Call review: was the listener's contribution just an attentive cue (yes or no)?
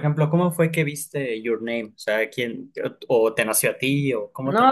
no